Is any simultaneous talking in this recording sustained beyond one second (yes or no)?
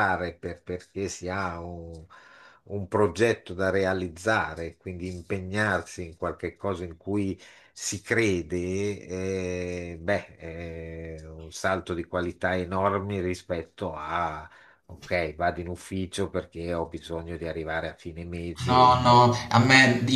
no